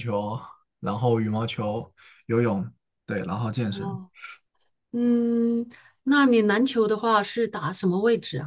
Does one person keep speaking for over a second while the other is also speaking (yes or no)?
no